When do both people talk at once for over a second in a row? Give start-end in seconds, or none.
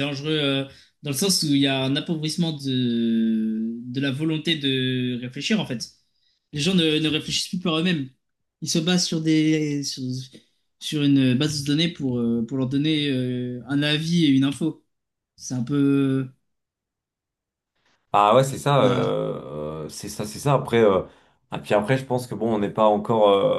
none